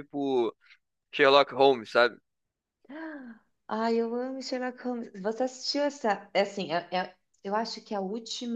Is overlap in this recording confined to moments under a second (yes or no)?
yes